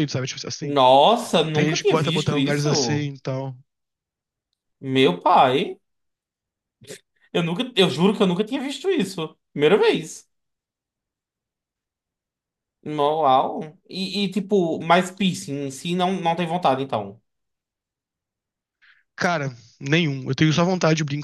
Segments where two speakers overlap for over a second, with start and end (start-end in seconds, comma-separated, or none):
1.5-3.1